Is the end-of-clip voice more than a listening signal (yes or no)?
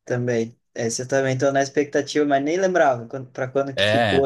yes